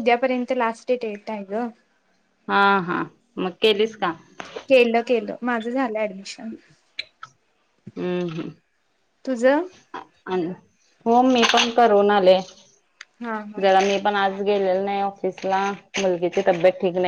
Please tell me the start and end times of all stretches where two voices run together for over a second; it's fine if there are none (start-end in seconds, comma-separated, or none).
none